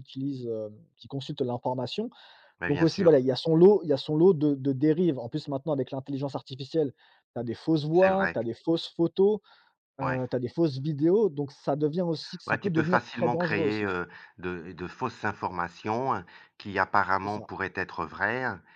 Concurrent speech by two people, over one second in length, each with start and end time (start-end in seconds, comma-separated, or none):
12.5-14.0